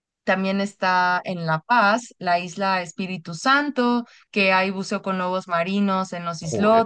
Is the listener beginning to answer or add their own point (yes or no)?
no